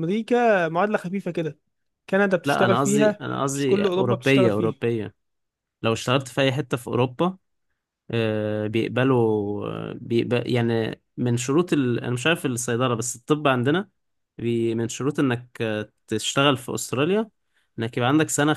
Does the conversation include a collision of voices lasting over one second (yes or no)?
yes